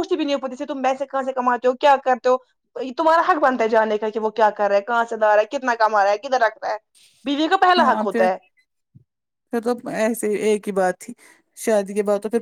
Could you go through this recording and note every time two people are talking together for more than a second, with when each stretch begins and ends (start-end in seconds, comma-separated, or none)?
none